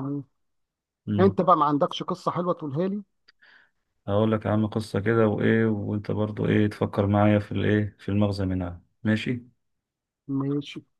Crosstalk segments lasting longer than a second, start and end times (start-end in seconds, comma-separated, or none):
none